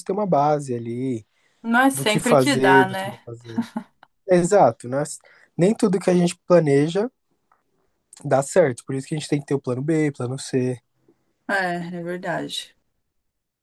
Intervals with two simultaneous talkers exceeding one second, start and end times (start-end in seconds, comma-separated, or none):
1.9-3.2